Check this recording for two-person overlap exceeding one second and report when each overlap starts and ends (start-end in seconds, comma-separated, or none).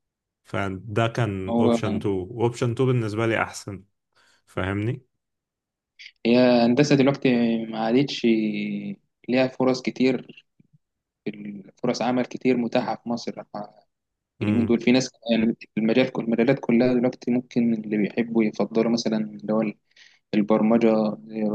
none